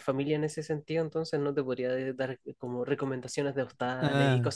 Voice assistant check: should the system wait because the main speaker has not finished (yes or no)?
no